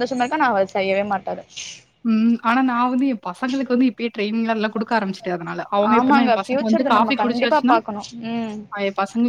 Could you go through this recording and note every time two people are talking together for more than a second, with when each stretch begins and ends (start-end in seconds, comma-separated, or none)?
6.0-7.8